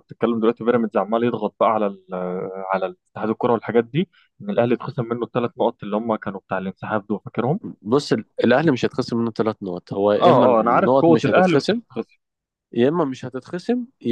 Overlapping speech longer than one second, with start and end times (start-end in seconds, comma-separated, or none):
10.2-11.8